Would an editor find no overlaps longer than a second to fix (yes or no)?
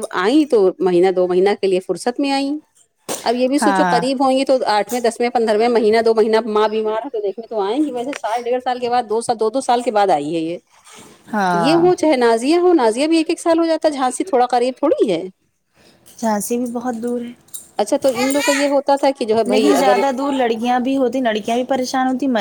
yes